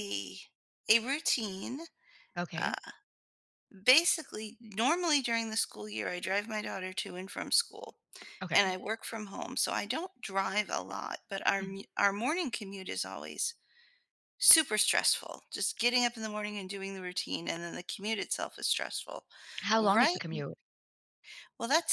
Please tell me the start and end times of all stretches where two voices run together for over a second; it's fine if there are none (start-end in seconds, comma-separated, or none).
none